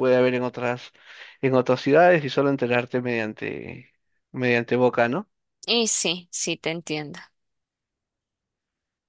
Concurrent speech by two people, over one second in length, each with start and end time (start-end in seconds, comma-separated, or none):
none